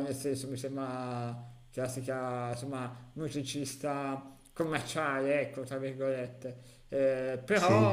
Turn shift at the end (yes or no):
no